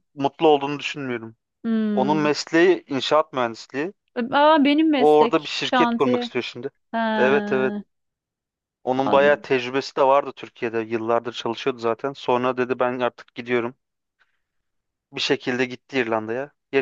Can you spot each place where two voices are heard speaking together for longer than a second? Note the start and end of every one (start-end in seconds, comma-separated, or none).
5.0-6.3